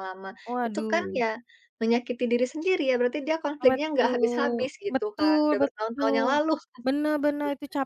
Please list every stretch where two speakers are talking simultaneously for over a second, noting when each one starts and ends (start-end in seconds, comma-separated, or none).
3.6-6.4